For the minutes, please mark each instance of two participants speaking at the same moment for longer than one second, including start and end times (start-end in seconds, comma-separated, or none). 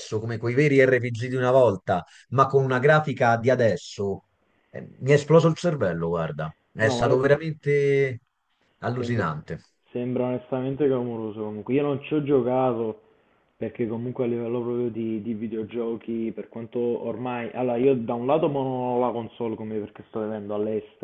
none